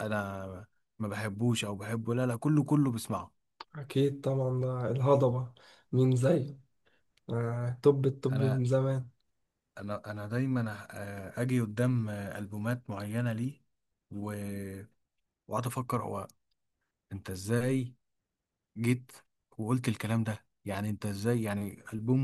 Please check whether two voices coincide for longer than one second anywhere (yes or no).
no